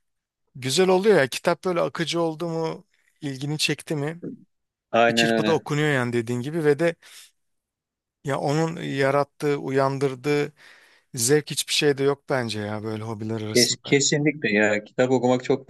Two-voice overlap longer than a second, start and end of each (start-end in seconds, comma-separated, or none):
none